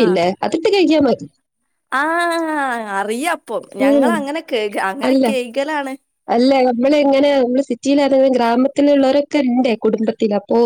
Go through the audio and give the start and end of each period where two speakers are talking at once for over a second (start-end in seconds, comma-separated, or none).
none